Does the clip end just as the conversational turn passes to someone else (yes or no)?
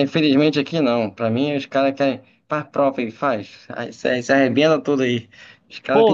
yes